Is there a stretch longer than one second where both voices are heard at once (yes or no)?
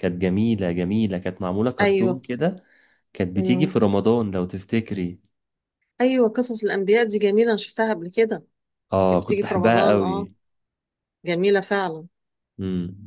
yes